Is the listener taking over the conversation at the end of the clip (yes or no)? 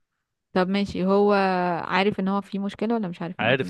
yes